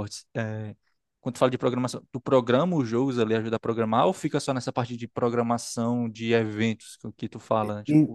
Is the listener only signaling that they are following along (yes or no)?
no